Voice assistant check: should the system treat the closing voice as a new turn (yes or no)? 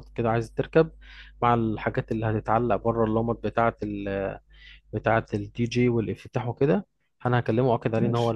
no